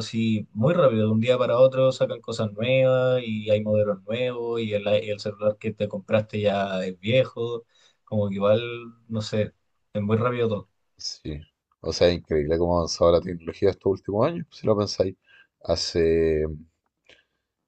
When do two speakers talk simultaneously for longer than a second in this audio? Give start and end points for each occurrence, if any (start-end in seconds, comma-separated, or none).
none